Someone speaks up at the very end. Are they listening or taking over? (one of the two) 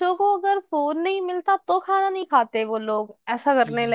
listening